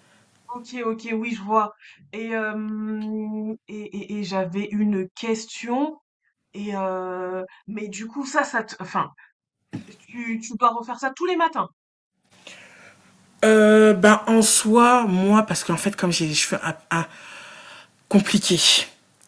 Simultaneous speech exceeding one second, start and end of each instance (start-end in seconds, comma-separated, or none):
none